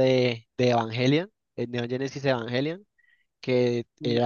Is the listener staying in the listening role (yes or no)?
yes